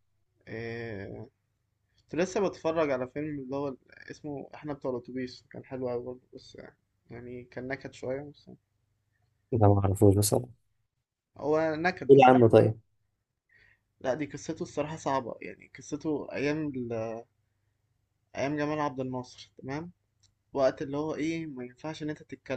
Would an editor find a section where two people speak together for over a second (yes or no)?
no